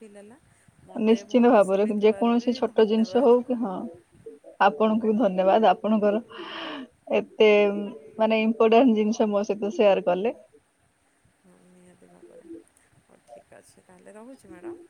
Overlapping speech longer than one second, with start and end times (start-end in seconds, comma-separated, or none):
1.1-3.3